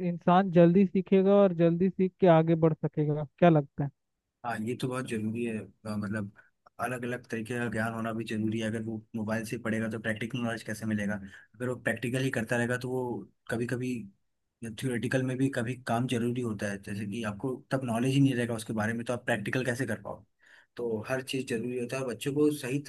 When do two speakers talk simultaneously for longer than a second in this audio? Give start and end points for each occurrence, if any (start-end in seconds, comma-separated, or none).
none